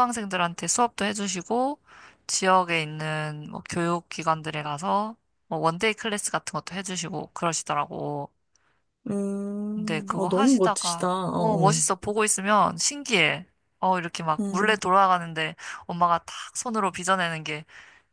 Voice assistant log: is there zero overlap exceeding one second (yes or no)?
no